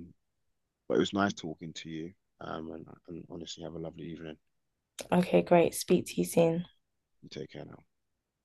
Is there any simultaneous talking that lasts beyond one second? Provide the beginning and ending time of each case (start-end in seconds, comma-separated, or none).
none